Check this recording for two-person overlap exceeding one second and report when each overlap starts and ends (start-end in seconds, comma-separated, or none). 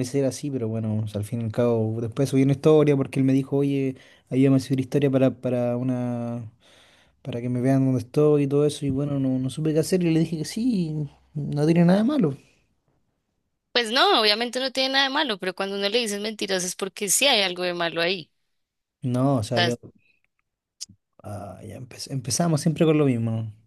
none